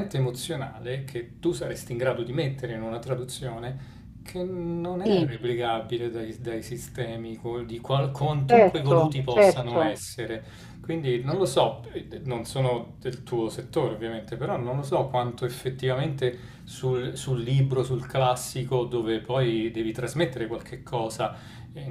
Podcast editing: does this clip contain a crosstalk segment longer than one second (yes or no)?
yes